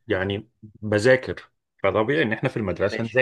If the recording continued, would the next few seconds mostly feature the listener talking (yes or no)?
no